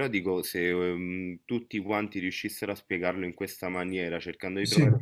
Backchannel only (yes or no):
yes